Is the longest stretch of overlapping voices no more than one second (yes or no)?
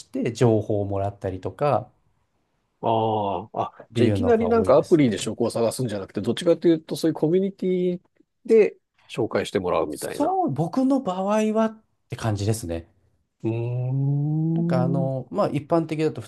no